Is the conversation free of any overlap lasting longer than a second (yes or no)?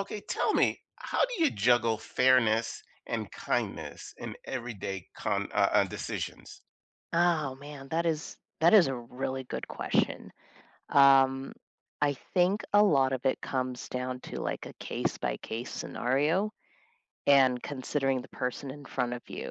yes